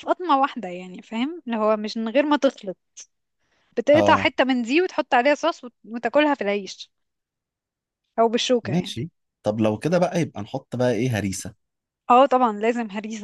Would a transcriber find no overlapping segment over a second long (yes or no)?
yes